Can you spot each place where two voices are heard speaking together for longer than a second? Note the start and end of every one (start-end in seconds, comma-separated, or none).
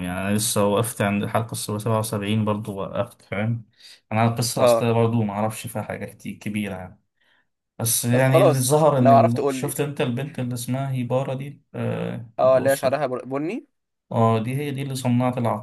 8.1-9.8